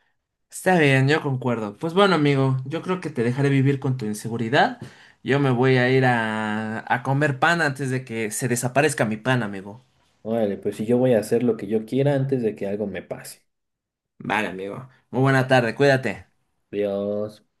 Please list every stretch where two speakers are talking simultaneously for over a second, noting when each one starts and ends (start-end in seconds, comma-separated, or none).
none